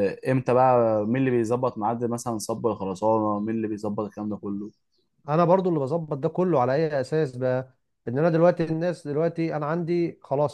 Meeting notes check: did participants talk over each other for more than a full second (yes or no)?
no